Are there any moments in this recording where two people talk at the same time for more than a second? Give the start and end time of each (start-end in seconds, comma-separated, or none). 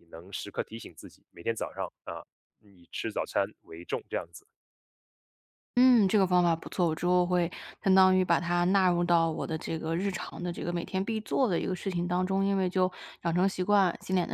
none